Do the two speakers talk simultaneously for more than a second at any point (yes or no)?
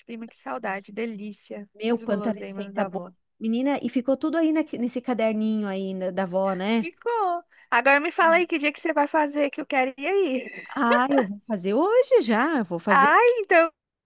yes